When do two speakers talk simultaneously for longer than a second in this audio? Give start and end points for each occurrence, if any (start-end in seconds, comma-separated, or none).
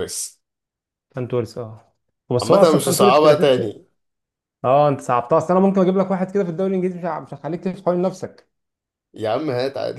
2.4-3.8